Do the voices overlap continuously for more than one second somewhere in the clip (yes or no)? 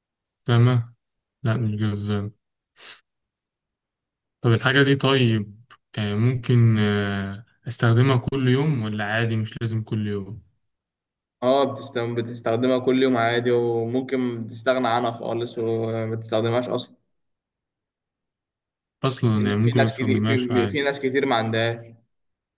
yes